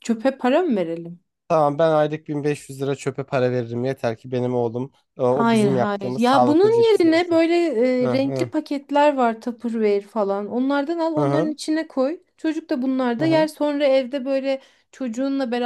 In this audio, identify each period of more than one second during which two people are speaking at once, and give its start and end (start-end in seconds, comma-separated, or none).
5.3-7.4